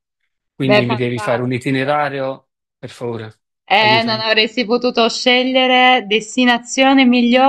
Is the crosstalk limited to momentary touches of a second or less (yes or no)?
no